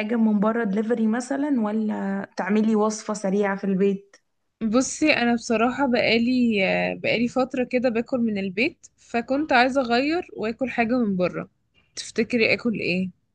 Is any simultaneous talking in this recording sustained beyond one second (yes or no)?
no